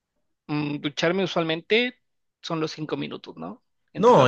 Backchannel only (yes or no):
no